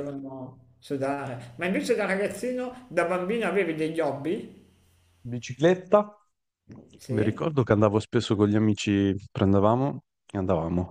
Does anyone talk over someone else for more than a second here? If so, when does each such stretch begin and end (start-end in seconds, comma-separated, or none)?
none